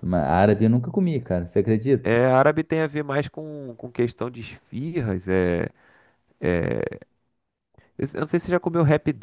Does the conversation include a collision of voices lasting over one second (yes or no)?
no